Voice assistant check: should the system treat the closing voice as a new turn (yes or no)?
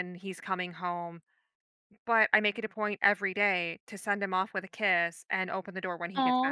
yes